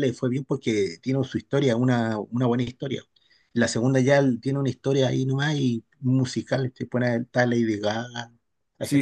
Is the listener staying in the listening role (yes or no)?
no